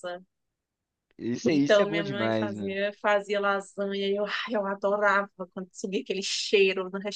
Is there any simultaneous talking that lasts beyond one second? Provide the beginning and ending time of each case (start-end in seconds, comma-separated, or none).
1.5-2.8